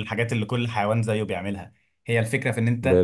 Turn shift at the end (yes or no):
no